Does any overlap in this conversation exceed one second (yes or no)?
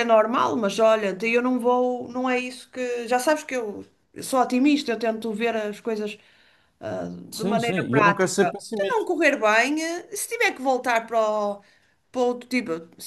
yes